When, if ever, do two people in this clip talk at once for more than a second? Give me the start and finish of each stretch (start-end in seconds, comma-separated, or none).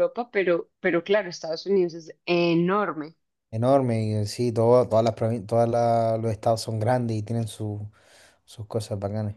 none